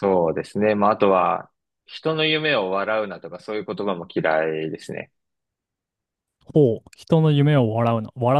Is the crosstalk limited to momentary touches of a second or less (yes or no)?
yes